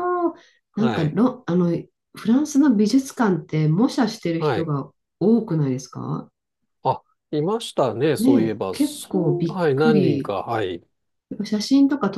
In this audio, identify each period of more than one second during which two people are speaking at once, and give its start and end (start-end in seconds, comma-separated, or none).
8.2-10.3